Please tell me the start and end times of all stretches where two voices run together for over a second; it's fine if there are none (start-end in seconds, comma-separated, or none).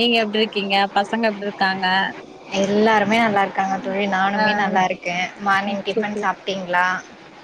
none